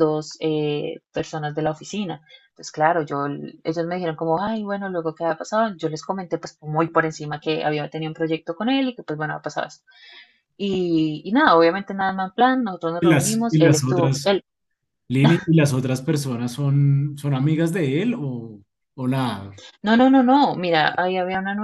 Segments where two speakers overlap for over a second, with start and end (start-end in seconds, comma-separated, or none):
13.0-14.3